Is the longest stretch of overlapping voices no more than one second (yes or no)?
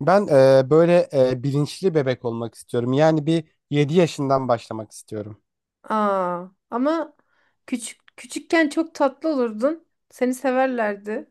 yes